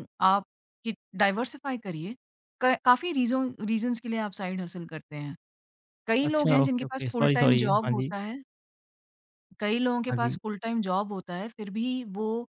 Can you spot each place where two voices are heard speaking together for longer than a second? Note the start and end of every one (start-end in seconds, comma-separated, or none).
6.2-8.1